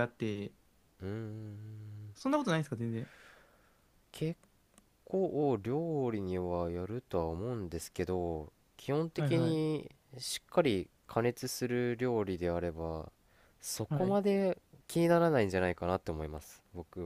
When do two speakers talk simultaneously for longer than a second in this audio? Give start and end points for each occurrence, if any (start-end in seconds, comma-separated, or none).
none